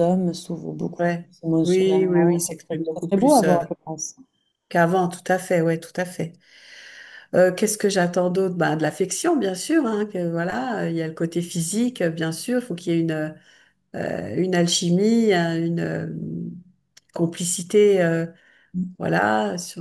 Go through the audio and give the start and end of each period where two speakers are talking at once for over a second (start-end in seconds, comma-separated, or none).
1.0-3.6